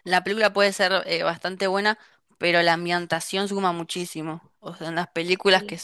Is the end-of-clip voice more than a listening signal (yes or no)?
no